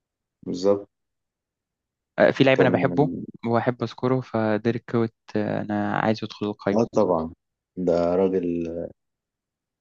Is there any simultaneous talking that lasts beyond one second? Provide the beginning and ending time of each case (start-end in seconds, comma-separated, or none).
none